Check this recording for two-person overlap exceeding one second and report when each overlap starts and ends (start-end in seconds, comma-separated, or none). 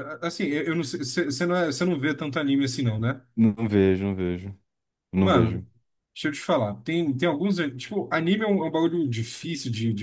none